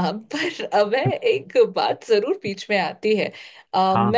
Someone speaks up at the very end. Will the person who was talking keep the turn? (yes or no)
yes